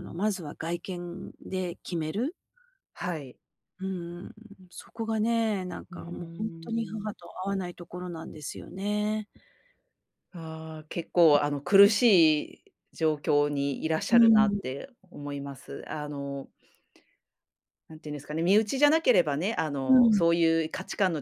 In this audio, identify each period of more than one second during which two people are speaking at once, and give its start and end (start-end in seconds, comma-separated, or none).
5.9-7.2